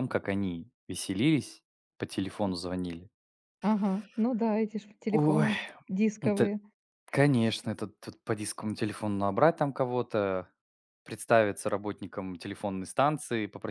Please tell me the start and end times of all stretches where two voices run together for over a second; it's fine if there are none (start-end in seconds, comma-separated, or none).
none